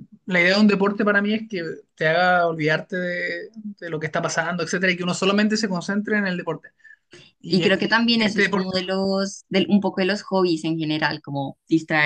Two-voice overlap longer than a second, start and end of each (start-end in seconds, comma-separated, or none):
7.5-8.9